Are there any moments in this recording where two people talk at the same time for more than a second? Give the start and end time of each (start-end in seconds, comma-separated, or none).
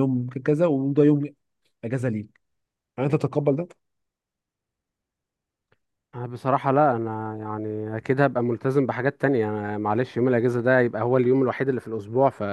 none